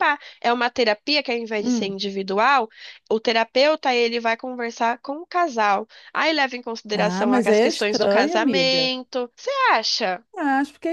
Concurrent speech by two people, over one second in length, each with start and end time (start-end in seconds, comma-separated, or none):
6.9-8.9